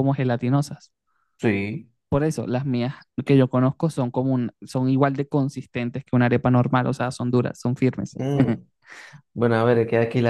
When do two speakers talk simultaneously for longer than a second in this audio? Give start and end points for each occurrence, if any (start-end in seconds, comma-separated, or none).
none